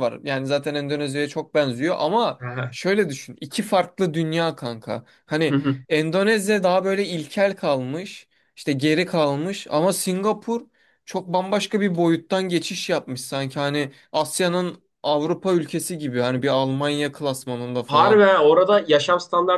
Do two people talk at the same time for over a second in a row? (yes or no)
no